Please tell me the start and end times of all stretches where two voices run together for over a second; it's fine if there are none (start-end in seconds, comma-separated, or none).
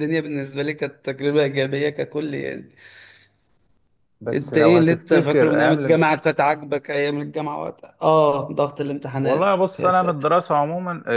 4.3-6.0, 9.2-10.4